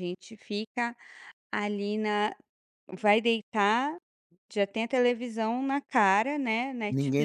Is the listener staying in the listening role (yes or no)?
no